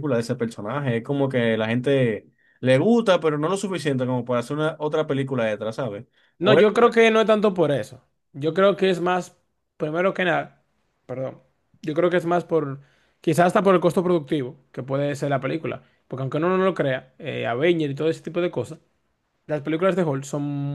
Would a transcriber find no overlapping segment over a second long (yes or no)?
yes